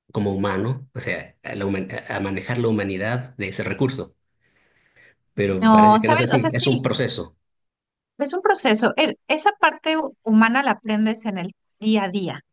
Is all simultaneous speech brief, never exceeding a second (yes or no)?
no